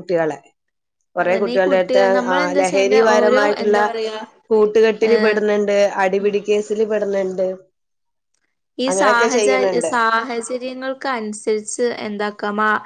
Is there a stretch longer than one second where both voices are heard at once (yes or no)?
yes